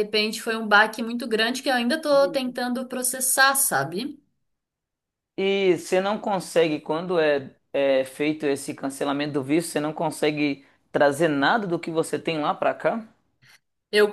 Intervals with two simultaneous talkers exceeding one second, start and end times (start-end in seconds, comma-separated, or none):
none